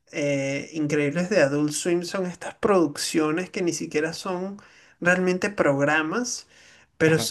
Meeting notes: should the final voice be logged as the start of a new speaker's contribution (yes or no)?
no